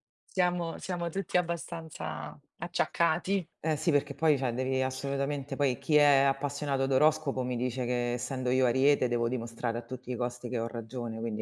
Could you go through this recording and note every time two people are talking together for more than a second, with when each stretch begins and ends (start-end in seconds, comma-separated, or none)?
none